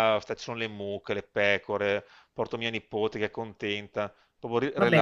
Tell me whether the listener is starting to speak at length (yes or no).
no